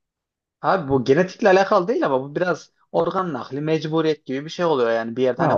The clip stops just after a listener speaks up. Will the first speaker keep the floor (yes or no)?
no